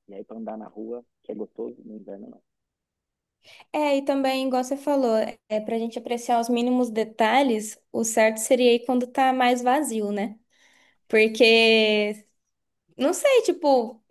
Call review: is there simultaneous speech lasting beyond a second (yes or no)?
no